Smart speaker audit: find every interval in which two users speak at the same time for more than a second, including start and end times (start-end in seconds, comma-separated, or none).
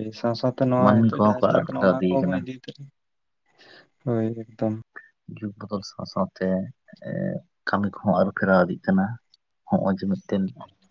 0.8-2.4